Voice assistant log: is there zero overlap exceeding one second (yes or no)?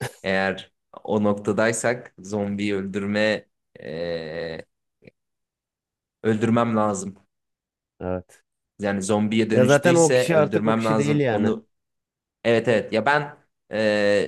no